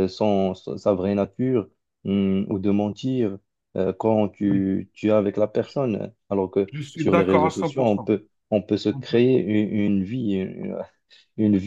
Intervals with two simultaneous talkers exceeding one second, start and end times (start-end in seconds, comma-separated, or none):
6.7-8.1